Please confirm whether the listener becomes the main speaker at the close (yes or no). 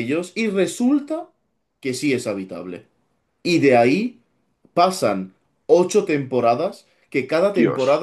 no